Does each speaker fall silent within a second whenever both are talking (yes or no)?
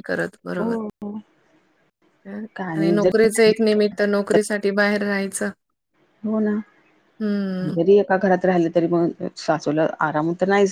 yes